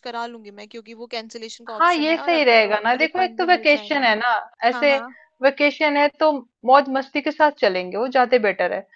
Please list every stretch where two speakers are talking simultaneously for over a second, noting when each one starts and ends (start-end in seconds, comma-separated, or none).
1.8-4.1